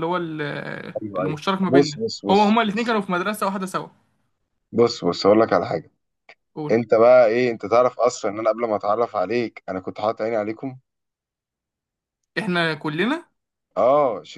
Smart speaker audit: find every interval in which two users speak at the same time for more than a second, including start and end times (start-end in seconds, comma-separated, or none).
1.0-3.0